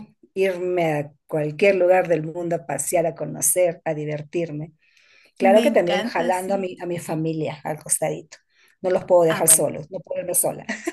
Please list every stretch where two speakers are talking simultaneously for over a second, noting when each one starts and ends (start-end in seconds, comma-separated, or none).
5.4-6.7